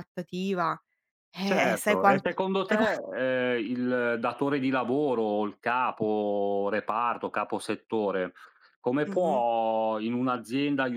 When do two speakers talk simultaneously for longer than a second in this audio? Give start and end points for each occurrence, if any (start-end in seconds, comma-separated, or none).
1.4-2.9